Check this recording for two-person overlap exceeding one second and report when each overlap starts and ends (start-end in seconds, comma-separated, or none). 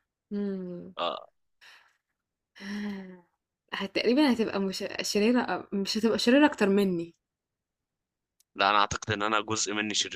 none